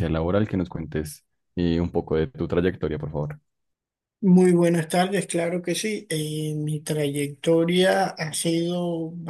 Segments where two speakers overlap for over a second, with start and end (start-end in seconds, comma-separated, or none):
none